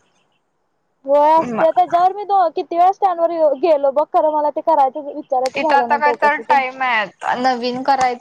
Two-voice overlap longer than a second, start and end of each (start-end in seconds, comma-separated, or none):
none